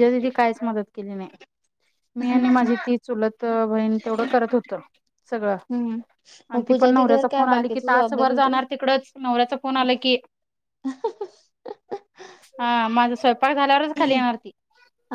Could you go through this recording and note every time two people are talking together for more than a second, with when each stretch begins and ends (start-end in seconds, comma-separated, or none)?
6.5-8.6